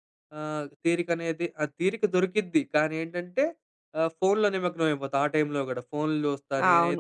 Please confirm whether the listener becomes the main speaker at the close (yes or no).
yes